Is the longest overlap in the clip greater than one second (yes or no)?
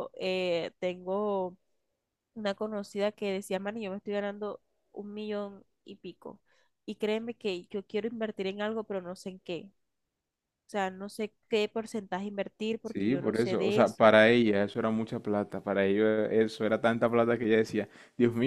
yes